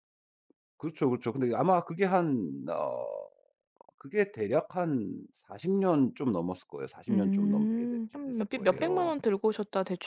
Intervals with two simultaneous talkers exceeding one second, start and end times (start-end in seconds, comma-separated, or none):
7.1-9.2